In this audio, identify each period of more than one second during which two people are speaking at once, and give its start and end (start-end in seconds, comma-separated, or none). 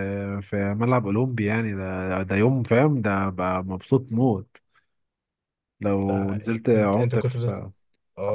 6.1-7.4